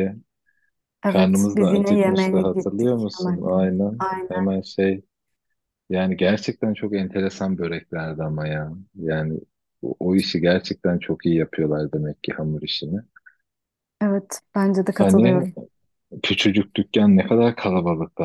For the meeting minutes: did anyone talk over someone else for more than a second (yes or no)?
yes